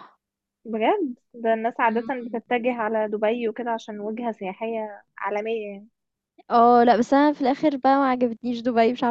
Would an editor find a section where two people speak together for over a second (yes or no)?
no